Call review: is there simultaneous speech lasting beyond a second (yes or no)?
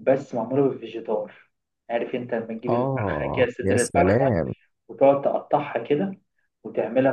yes